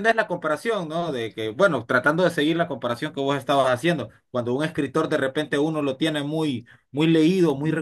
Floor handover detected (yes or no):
no